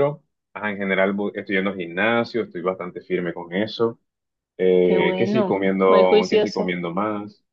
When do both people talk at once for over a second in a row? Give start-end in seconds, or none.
4.8-6.8